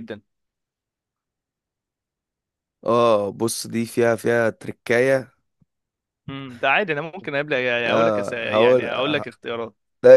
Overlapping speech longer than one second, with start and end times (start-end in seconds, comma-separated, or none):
7.9-9.2